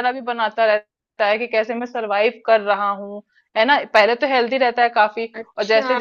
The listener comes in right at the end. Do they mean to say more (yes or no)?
no